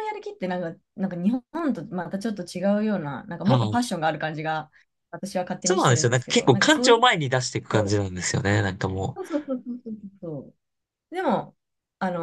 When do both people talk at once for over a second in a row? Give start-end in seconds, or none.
5.6-7.0